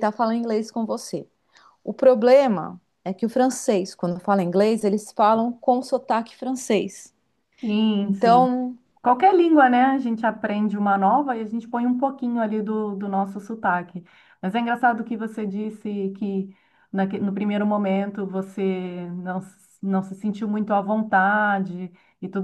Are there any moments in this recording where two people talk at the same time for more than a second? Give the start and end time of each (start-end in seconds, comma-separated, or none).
none